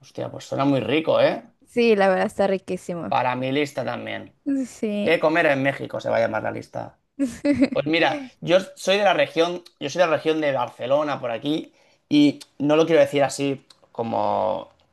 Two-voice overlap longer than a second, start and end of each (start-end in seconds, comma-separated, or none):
none